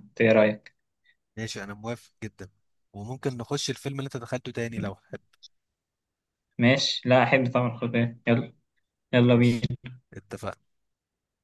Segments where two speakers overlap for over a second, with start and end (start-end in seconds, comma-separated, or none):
none